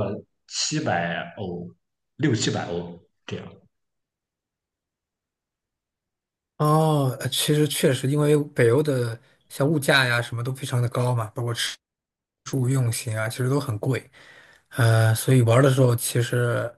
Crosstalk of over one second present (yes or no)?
no